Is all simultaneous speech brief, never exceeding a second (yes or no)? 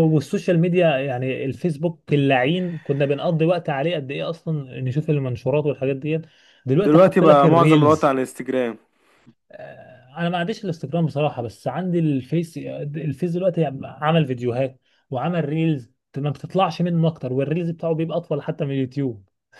no